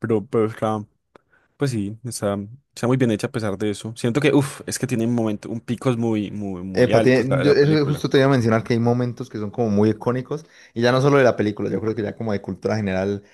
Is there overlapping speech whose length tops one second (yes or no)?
yes